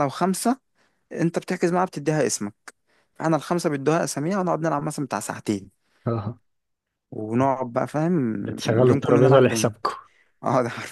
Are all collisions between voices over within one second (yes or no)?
no